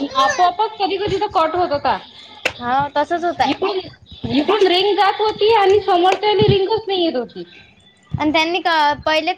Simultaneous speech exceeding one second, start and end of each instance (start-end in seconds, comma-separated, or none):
none